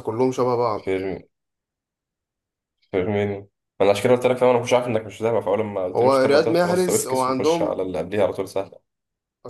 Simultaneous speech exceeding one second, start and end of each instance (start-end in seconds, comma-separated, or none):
5.9-7.7